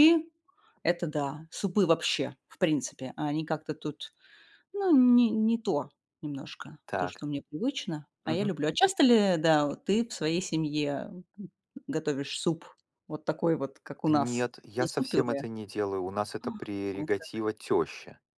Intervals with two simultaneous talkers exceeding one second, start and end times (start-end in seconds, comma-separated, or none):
14.1-15.4